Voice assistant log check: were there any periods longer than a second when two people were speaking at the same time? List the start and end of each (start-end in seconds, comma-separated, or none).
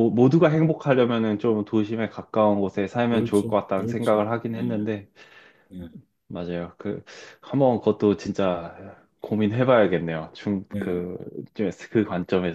3.1-4.6